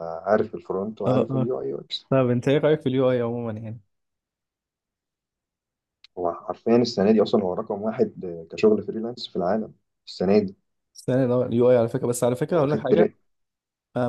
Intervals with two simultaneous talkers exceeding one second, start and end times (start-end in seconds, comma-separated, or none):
none